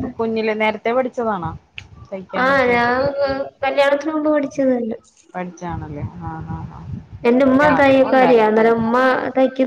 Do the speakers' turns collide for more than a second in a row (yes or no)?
yes